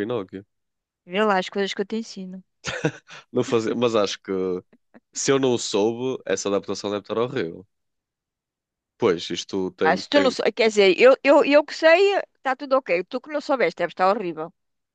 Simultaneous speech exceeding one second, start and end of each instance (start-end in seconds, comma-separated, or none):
none